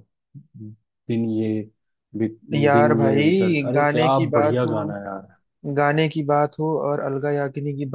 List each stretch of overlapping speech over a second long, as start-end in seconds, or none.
2.7-4.9